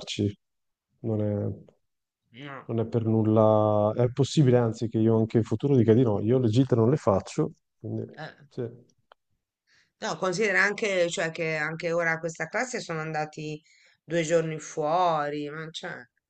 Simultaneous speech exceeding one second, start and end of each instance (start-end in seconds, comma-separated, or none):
none